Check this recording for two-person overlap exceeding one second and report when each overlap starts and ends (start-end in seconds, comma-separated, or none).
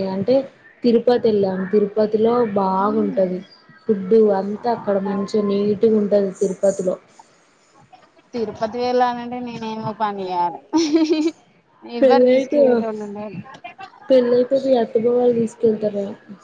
none